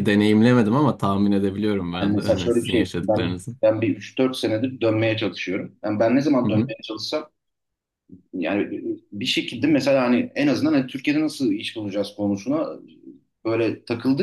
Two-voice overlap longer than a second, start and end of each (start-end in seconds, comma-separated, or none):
2.0-3.6